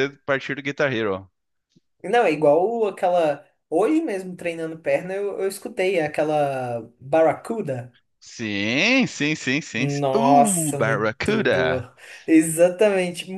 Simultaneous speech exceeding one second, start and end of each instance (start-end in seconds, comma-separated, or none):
9.8-11.9